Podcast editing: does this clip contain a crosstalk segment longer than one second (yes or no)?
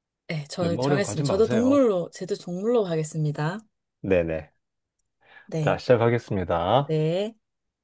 yes